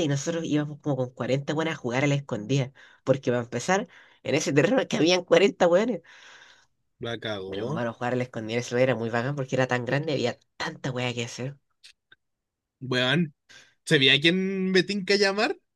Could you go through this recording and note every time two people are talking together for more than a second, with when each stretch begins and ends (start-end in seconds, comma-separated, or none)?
none